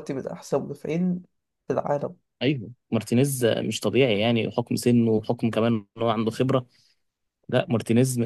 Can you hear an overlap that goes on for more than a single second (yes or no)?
no